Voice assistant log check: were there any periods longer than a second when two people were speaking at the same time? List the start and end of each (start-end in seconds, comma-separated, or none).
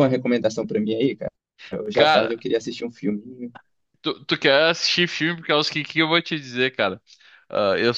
none